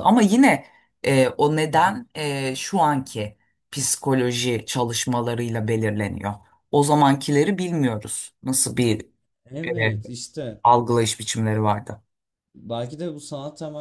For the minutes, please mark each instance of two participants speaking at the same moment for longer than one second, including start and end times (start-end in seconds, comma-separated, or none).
none